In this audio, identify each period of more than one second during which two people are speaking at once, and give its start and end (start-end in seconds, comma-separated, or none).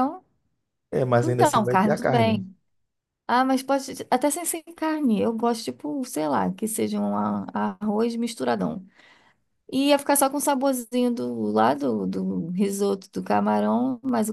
1.2-2.4